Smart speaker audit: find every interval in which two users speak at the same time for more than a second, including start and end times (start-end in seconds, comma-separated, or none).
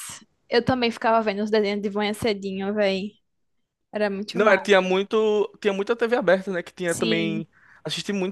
none